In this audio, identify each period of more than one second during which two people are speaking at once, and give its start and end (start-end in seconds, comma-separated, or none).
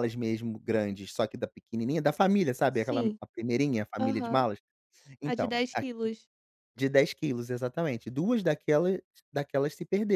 none